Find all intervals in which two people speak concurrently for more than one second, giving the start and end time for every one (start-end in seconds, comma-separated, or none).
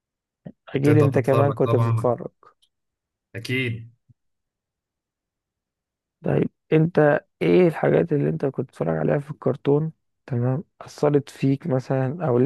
0.7-2.1